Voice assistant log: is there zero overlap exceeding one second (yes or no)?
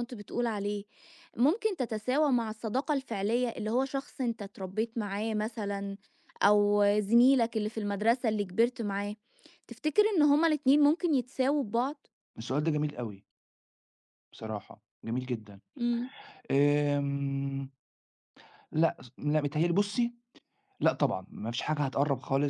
yes